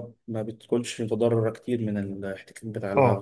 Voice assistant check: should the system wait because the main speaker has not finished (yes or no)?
no